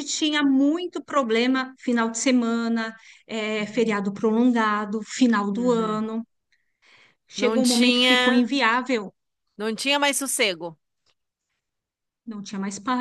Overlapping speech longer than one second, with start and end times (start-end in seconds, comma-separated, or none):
7.3-8.5